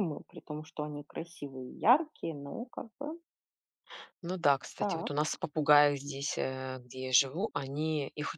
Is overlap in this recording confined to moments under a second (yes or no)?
yes